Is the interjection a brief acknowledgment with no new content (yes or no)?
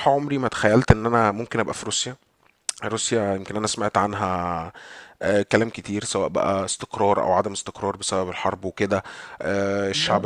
yes